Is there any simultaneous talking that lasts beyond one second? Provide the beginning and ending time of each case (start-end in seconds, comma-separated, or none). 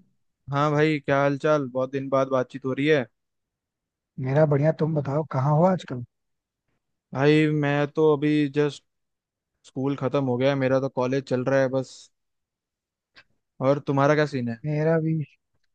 none